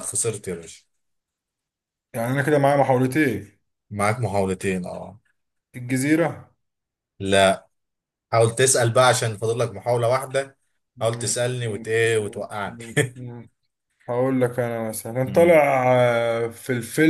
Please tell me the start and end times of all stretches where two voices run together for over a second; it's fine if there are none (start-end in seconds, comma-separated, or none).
11.0-12.8